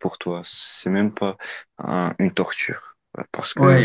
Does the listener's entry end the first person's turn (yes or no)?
yes